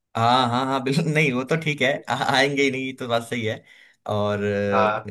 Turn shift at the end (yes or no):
no